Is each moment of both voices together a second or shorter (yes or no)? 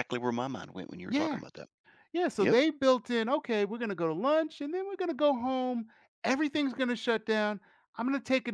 yes